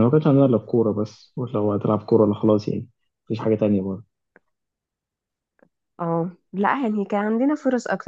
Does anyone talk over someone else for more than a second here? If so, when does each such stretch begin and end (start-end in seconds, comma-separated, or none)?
none